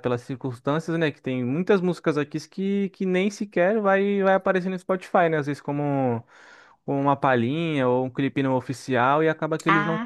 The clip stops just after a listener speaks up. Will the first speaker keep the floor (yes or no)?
yes